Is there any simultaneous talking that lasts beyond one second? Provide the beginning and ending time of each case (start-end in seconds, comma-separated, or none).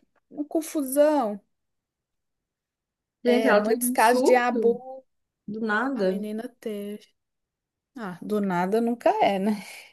3.2-4.8